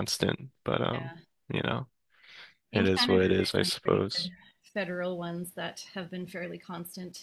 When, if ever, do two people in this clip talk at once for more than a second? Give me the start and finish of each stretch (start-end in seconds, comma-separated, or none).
2.7-4.3